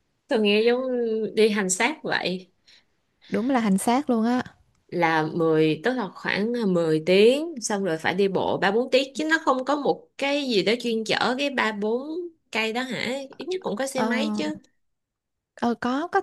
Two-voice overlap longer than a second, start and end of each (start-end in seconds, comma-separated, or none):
none